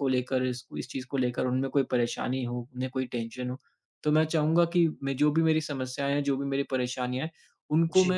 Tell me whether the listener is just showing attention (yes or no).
yes